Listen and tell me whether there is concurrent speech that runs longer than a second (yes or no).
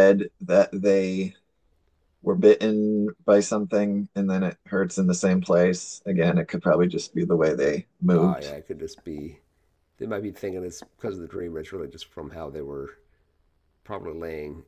no